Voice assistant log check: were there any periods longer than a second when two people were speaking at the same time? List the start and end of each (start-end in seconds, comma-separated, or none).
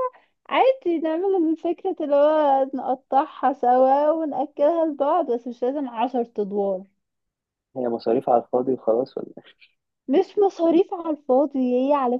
none